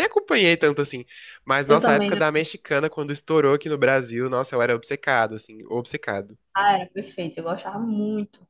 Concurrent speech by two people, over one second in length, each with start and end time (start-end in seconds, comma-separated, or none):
none